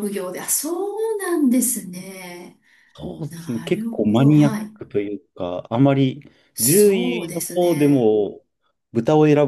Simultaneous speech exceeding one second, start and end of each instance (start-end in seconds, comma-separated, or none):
3.3-4.7, 6.6-8.1